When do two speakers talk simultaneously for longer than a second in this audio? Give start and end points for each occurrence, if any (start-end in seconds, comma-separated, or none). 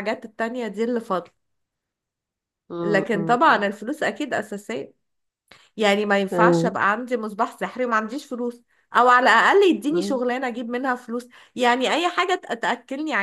none